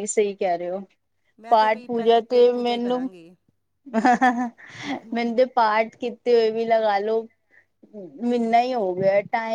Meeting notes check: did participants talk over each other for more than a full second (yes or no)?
yes